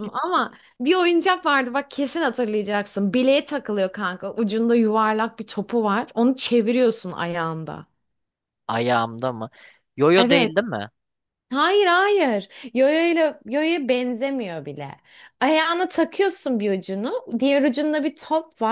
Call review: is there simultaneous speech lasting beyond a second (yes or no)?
no